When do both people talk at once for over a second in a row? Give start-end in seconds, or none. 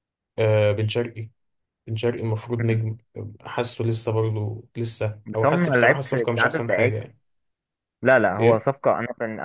5.2-7.1